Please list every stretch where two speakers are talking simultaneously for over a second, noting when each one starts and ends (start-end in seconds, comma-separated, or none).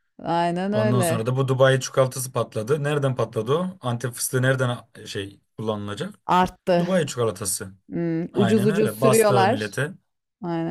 8.3-9.7